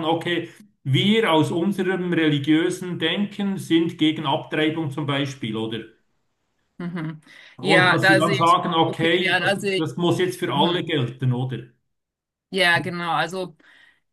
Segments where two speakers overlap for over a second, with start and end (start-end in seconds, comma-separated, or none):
7.6-9.9